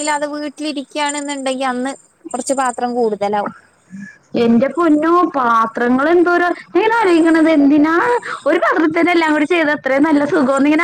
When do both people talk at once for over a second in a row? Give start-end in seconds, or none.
none